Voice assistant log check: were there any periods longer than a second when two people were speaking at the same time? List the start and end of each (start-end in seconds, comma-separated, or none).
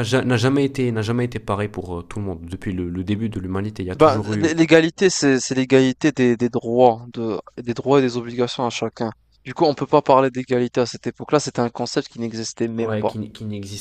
none